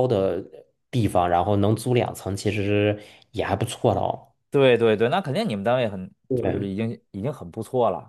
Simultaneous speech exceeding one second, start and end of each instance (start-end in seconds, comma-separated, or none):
none